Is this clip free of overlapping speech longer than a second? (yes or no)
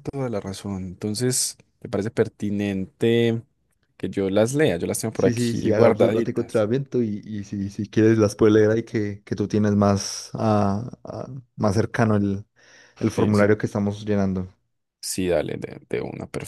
no